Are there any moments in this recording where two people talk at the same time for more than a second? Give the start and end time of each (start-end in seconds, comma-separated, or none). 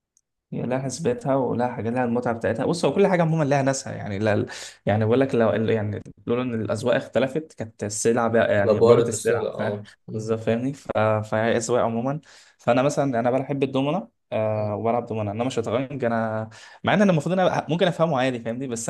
8.6-10.3